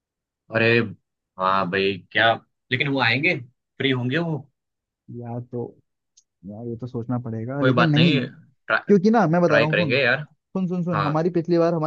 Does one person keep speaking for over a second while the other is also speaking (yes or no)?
no